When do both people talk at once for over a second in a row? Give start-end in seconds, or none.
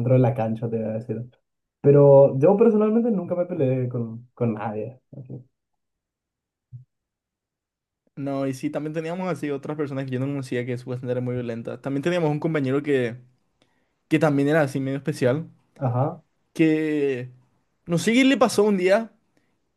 none